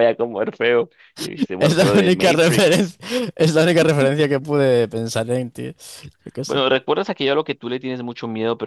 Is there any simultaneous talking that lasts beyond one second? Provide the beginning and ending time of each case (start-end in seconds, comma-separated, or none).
1.6-3.0